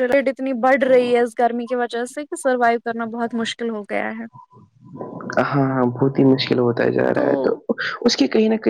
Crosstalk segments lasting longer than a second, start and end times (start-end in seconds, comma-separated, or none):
none